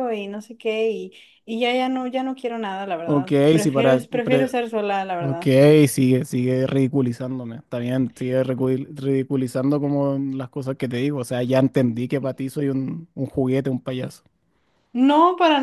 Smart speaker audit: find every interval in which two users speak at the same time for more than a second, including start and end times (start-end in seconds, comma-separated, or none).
3.0-4.5